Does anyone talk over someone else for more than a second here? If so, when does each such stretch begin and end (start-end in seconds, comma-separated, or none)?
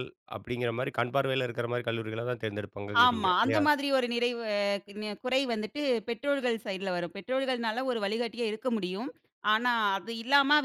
none